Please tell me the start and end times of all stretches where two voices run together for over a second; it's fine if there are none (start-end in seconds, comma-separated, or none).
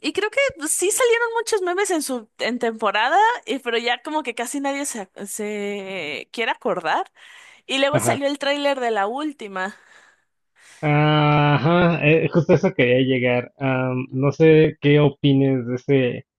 none